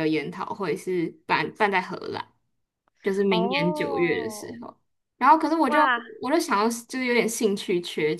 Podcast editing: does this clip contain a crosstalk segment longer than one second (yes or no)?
yes